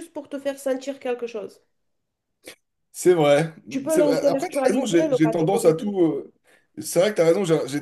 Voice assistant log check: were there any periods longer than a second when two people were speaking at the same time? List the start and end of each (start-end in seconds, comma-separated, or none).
3.9-5.9